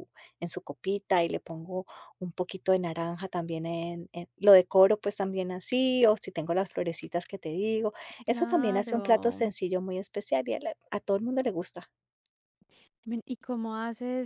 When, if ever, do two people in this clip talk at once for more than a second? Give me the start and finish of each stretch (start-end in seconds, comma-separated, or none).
8.3-9.5